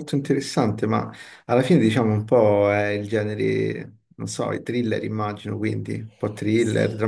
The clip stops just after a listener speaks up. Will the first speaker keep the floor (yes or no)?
no